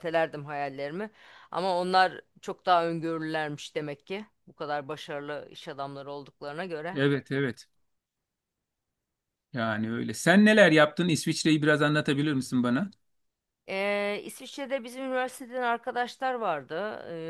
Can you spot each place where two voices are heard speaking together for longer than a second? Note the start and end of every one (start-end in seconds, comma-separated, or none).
none